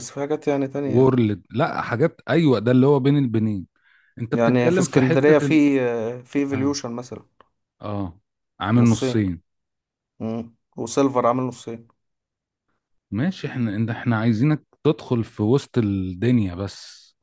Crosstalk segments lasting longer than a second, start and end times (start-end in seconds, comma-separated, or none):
4.3-5.6